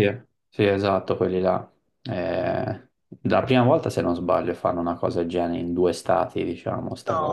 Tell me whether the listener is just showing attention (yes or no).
no